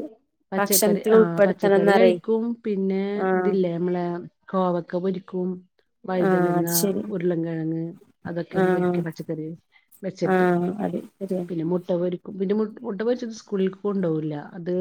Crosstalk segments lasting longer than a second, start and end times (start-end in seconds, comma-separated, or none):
0.6-2.1